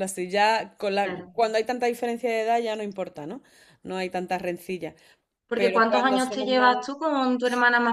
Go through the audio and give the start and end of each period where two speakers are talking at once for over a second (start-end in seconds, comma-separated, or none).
5.5-6.8